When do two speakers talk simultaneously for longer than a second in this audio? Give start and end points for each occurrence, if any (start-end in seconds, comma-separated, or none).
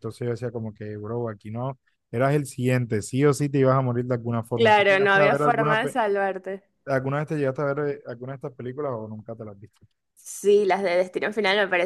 4.5-6.0